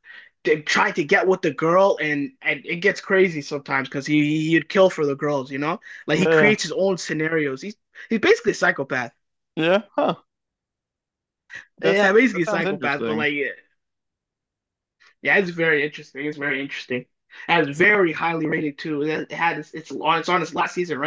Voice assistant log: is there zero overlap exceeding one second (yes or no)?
no